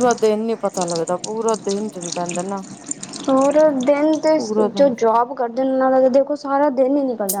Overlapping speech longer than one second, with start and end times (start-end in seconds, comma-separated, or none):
none